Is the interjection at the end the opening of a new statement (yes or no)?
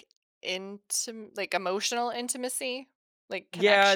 yes